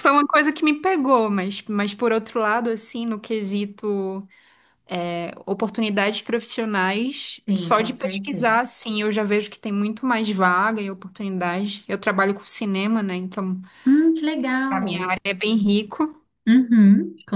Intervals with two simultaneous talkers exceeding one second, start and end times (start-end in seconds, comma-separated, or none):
7.5-8.7